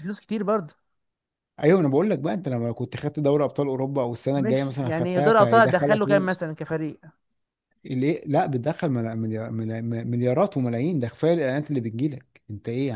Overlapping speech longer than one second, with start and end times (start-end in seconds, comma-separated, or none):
4.4-6.4